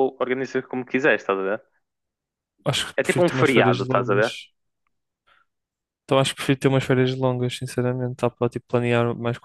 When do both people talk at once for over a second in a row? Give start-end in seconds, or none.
3.0-4.2